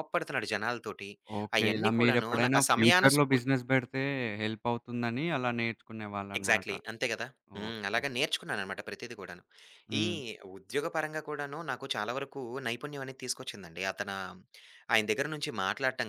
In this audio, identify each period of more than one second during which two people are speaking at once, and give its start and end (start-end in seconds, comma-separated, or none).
1.6-3.4